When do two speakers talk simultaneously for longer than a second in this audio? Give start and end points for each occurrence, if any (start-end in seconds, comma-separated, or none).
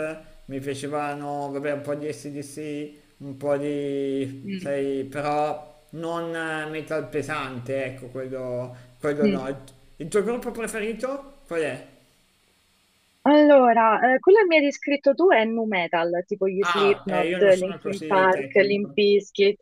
16.6-19.0